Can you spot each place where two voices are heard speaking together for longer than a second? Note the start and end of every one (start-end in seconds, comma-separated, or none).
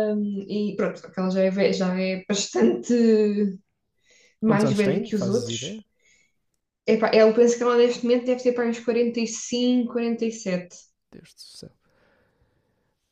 4.4-5.8